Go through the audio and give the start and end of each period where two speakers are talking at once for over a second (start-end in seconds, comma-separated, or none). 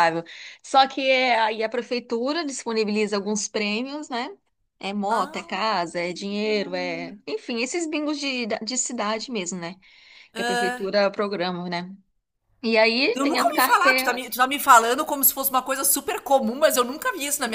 13.2-14.4